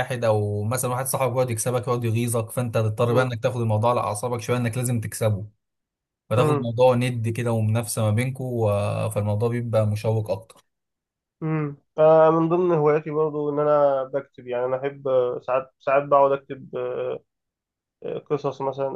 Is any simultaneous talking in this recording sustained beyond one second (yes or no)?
no